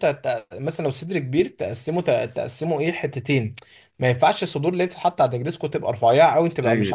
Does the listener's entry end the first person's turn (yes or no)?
no